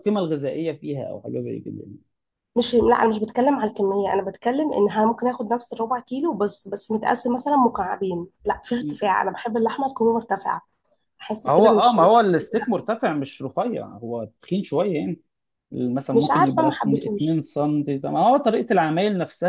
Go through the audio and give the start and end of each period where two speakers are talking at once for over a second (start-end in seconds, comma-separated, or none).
11.4-12.8, 16.1-17.4